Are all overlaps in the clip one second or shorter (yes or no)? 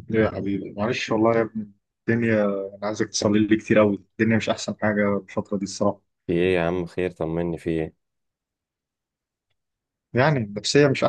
yes